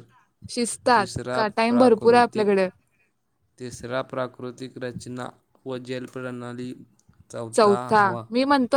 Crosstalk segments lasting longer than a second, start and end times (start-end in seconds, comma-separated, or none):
1.0-2.5